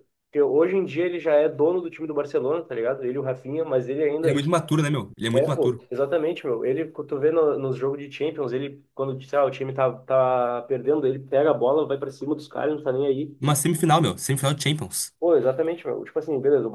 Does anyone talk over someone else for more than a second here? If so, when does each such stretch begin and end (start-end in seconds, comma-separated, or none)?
none